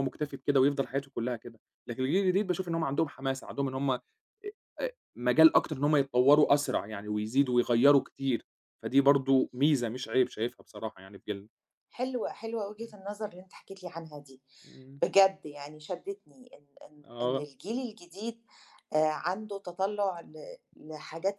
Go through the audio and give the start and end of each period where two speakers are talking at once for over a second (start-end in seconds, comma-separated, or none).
none